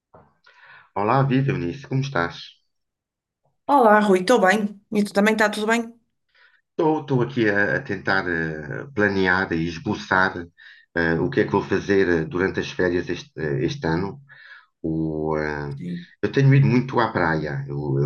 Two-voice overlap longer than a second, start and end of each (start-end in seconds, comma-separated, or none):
none